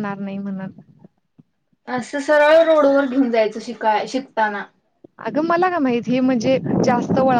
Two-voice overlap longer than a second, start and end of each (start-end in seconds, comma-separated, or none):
none